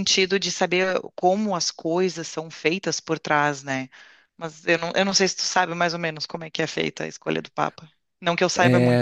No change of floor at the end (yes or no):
no